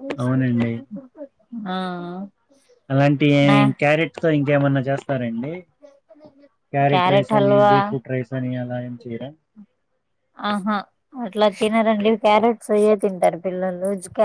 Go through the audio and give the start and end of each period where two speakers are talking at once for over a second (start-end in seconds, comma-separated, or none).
none